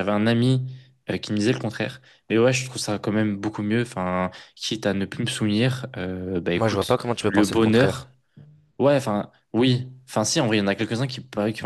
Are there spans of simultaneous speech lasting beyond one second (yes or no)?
yes